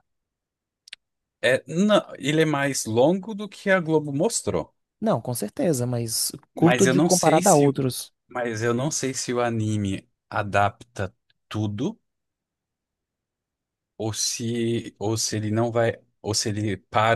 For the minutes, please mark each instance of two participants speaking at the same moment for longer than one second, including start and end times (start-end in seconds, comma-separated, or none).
6.5-7.8